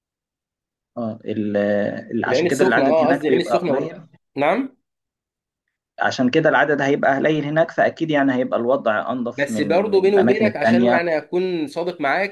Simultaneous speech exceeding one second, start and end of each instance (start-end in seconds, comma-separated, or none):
2.3-4.0, 9.3-11.0